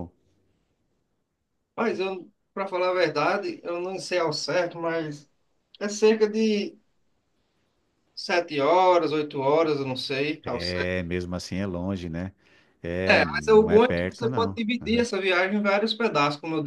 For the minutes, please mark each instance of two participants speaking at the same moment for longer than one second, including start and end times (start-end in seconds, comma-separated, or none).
13.1-15.1